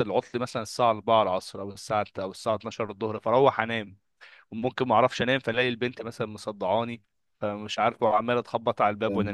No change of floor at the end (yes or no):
yes